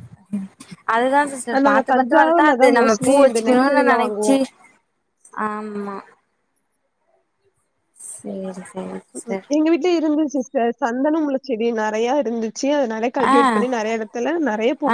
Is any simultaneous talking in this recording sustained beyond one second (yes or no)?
yes